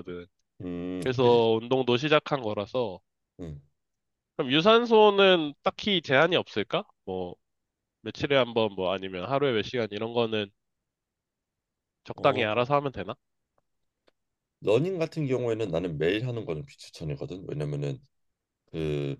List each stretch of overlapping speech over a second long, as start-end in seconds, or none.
none